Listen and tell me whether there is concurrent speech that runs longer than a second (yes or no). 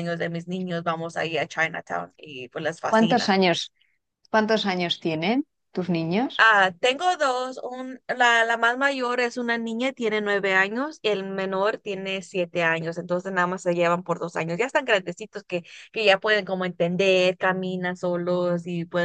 no